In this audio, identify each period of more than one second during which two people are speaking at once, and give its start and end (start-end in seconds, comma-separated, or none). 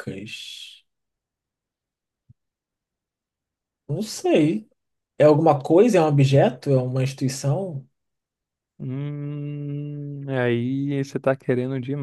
none